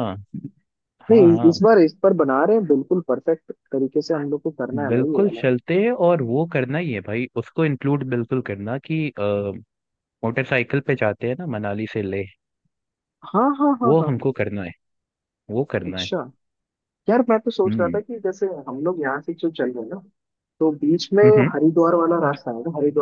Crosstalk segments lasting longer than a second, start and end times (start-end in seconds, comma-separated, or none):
none